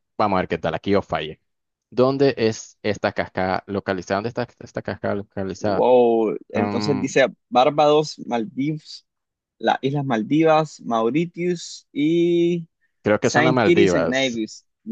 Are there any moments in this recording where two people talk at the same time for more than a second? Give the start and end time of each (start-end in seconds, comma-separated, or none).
13.2-14.4